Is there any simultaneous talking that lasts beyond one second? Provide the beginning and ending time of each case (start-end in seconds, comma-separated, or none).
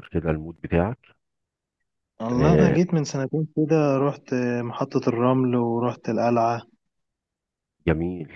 none